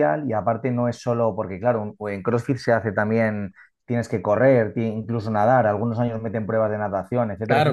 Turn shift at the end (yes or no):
no